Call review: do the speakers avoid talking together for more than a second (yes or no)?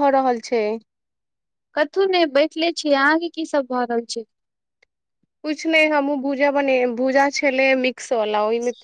yes